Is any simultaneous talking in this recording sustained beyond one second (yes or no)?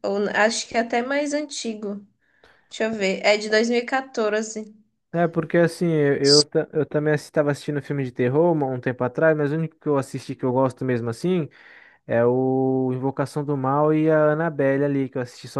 no